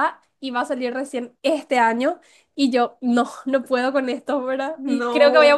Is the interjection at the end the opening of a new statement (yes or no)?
no